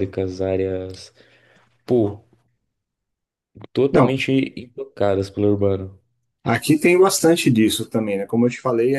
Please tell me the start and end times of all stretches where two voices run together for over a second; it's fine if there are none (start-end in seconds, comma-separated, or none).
none